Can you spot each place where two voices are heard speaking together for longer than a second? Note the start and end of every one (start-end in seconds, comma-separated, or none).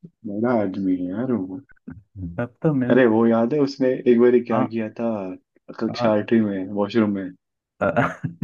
none